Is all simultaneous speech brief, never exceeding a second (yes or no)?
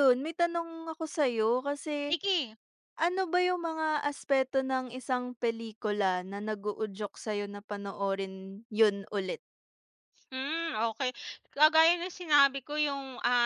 yes